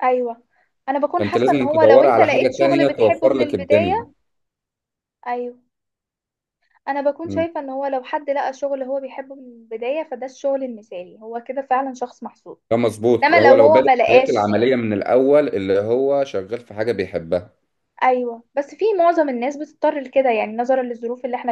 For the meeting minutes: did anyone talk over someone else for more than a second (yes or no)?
yes